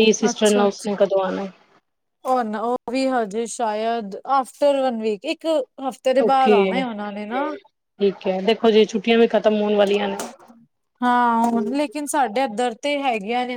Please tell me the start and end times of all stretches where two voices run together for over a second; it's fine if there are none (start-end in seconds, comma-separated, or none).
none